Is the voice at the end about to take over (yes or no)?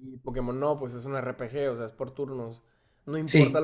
no